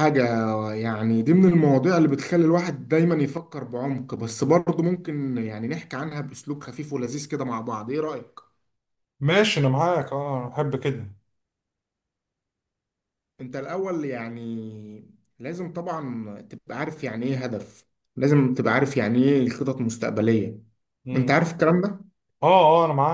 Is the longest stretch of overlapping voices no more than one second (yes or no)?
yes